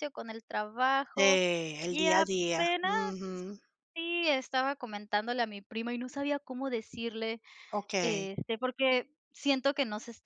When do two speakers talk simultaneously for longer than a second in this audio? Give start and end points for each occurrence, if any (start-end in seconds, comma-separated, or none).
1.9-3.1